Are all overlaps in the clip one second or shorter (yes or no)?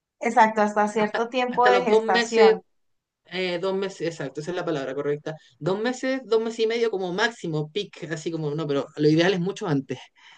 no